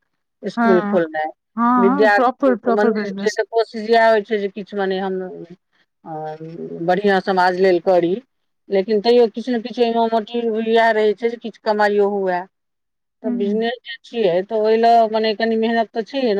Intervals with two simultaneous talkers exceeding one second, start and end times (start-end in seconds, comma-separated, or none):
1.8-3.4